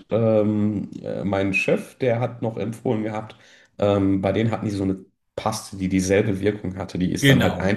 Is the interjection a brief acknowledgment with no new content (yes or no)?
no